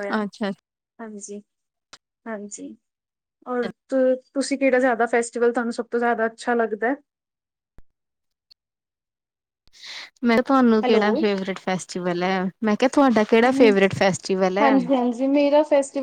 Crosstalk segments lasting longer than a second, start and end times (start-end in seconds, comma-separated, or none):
none